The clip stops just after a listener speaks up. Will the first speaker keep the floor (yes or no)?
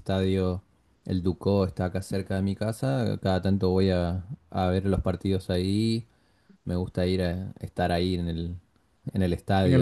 no